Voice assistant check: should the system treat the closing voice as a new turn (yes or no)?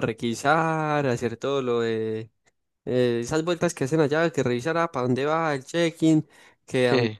no